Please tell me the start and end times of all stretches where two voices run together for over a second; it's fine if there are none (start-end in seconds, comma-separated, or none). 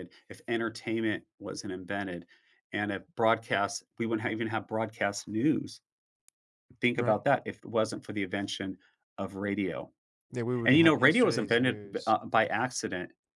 10.7-12.1